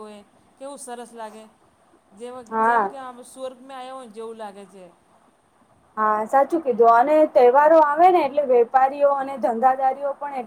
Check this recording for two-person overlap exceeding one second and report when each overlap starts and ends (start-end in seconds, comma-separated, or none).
none